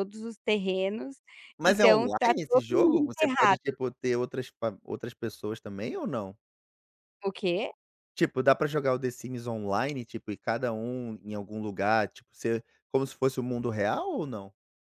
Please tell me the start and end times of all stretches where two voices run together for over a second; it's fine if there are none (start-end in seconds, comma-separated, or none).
1.6-3.6